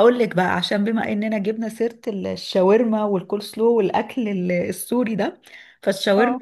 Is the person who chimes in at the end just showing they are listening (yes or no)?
yes